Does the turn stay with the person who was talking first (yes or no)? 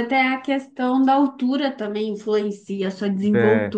no